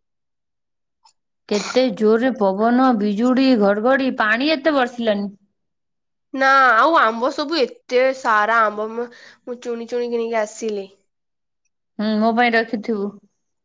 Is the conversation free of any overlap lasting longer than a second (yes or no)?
yes